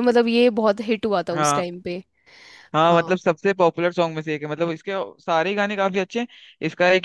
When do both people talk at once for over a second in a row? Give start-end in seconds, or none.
none